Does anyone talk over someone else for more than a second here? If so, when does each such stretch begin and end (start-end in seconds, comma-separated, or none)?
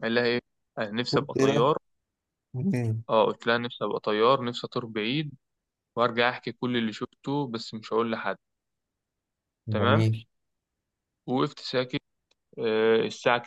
none